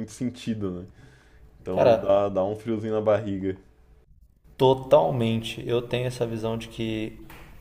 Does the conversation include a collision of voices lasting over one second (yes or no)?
no